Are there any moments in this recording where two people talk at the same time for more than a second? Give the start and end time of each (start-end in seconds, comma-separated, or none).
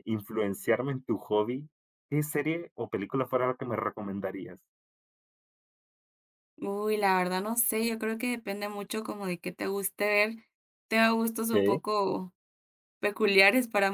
none